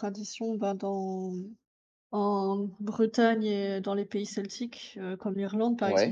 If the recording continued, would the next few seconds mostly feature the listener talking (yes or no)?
no